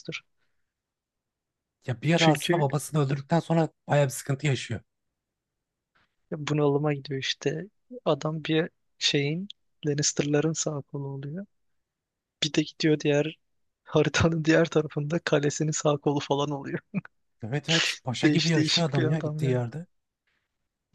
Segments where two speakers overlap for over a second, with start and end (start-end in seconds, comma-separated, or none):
18.2-19.6